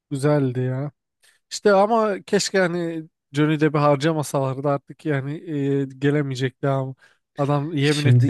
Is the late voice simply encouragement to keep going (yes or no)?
no